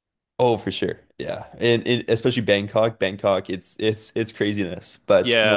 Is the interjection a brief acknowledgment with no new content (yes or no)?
no